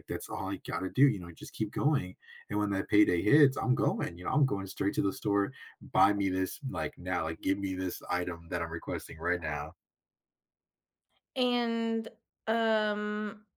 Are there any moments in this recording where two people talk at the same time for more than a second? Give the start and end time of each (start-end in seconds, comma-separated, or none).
none